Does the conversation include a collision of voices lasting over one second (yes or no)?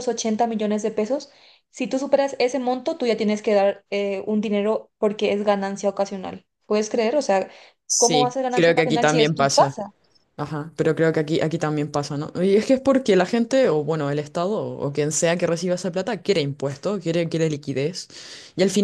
yes